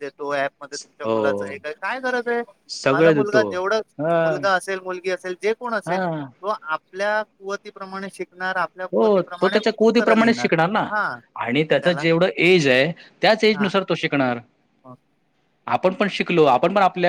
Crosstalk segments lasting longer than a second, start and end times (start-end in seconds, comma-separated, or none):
8.9-10.5